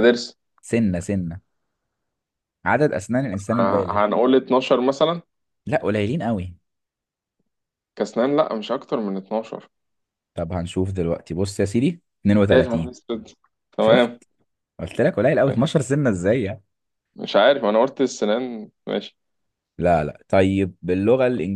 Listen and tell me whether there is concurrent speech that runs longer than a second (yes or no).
no